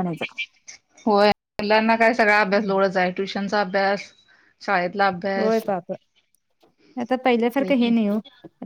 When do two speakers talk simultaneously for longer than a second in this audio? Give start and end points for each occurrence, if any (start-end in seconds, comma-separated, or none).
none